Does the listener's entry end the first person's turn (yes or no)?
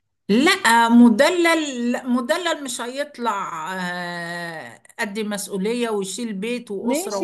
yes